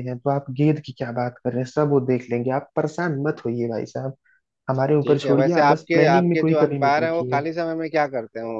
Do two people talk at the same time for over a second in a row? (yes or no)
yes